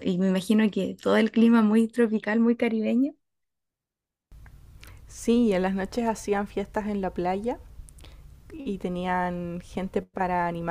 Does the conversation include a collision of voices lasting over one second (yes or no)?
no